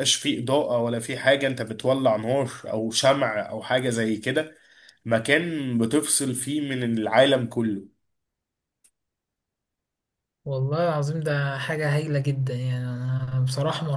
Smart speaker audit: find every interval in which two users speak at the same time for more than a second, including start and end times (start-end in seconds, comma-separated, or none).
none